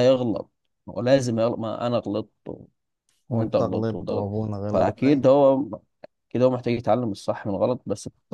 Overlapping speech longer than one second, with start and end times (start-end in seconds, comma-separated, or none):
3.3-5.3